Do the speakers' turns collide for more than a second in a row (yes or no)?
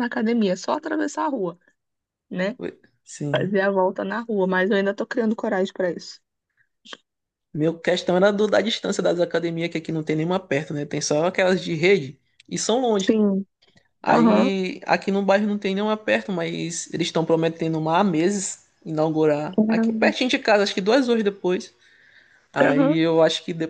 no